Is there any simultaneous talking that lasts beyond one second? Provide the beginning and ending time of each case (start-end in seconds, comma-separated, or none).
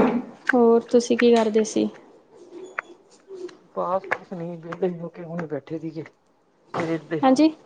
none